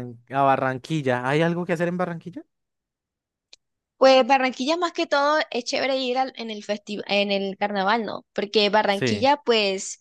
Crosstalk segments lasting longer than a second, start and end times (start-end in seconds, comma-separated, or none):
none